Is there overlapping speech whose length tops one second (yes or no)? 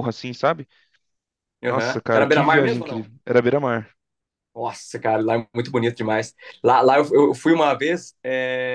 yes